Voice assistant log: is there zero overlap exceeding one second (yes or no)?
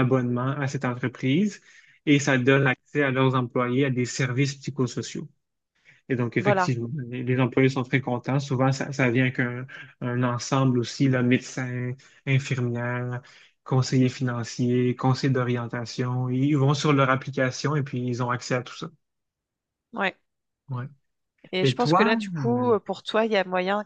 yes